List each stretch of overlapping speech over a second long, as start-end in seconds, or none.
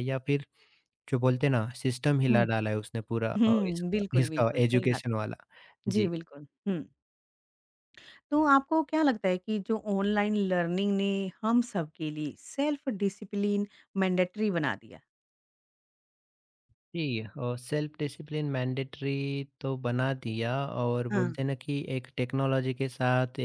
3.4-5.0